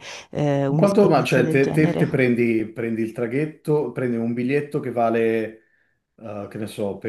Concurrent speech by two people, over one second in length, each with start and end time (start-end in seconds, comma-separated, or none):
0.7-2.3